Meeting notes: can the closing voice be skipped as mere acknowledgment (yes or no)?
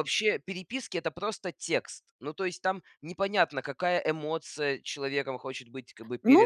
no